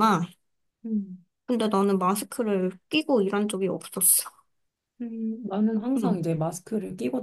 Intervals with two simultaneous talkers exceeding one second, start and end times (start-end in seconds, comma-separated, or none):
none